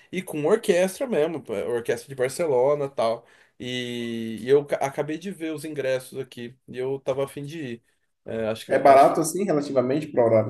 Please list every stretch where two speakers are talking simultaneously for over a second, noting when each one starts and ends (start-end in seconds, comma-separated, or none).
none